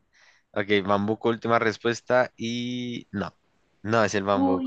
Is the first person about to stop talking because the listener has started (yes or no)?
no